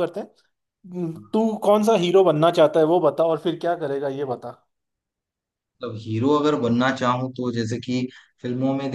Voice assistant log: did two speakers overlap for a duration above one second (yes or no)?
no